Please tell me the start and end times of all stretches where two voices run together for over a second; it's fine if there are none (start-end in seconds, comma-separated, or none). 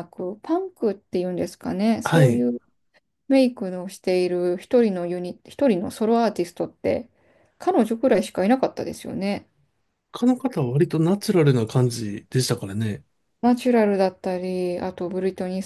none